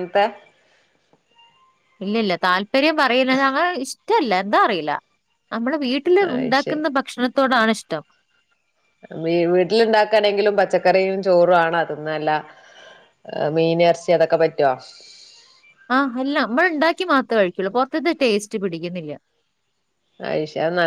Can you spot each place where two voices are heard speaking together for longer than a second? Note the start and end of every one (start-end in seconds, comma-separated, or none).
none